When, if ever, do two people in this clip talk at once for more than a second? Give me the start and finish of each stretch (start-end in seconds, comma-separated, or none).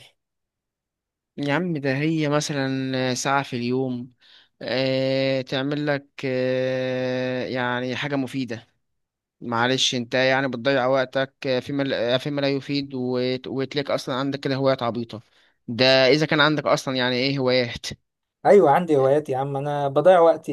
none